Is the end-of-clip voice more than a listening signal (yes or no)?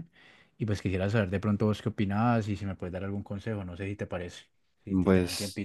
yes